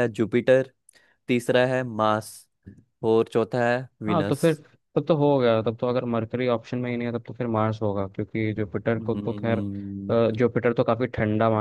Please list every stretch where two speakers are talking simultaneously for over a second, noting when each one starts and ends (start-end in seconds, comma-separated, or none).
9.0-10.3